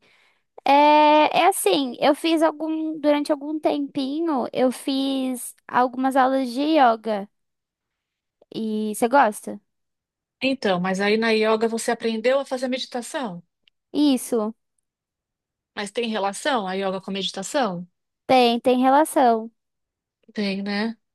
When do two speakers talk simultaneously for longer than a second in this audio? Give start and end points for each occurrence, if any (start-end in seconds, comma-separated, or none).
none